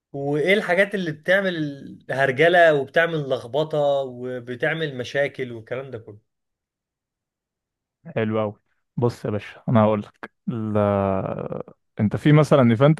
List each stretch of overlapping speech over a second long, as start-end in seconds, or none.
none